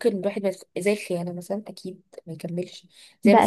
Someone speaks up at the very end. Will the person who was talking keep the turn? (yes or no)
yes